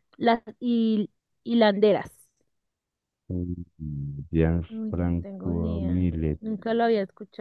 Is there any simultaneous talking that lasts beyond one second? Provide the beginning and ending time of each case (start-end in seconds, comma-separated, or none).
4.7-6.4